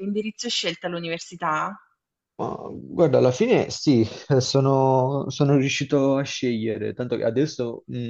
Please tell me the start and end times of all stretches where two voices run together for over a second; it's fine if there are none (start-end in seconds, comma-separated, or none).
none